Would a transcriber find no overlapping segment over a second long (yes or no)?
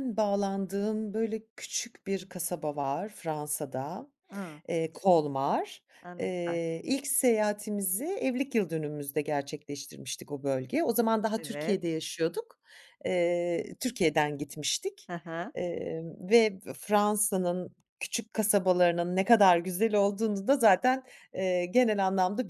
yes